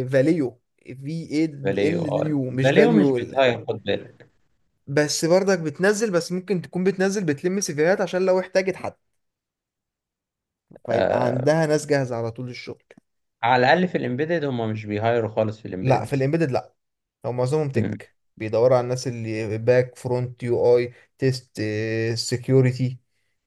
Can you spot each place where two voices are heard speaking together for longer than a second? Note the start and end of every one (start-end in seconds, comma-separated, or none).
1.6-3.4